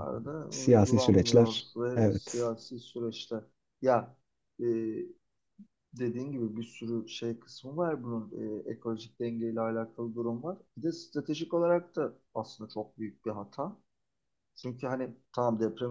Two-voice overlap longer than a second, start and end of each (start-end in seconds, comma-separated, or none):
0.5-2.5